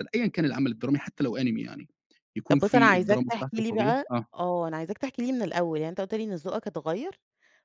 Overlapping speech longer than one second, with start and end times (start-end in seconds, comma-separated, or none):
2.5-4.3